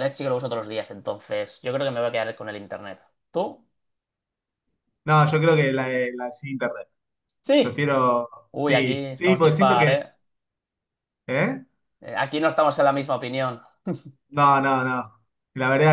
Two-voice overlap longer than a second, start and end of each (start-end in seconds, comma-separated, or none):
8.5-10.0